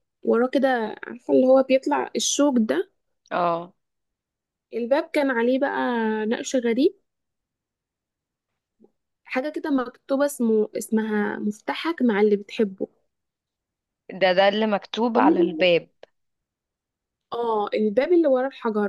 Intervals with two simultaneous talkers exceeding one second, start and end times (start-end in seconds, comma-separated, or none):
none